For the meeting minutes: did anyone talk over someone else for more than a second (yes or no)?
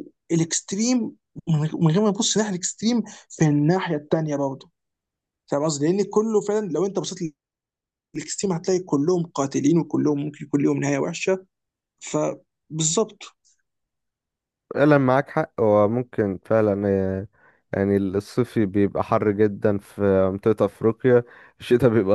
no